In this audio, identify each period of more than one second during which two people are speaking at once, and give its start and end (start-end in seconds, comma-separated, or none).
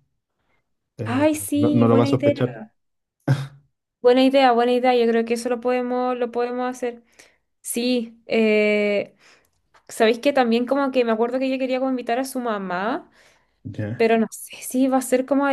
1.0-2.3